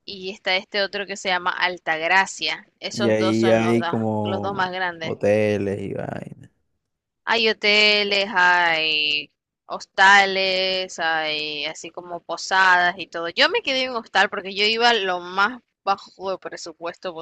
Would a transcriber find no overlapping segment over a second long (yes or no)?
no